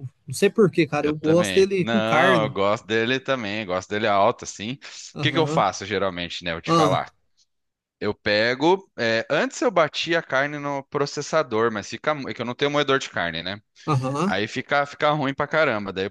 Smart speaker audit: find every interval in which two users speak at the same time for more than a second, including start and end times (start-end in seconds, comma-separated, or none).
1.0-2.6